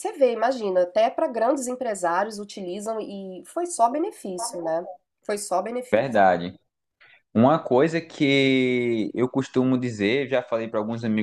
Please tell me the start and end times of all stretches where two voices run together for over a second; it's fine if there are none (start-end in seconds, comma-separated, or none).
none